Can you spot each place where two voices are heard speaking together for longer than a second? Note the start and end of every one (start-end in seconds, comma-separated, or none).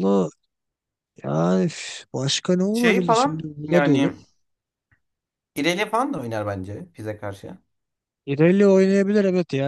2.7-4.1